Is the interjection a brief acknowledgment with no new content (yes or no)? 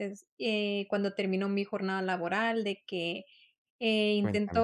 yes